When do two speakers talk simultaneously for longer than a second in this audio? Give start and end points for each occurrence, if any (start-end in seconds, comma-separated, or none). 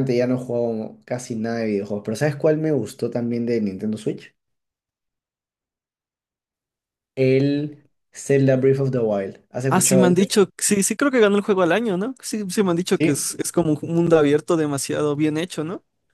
none